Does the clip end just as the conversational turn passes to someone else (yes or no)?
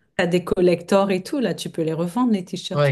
yes